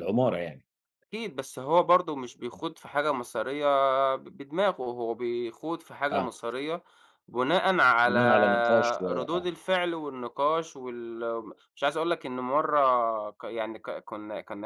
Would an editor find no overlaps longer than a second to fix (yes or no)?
no